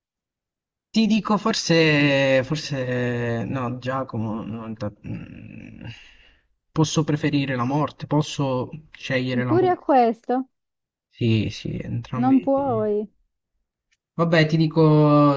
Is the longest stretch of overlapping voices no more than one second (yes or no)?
yes